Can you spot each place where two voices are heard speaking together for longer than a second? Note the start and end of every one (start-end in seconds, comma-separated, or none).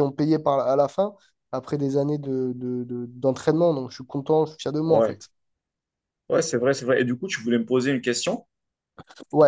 none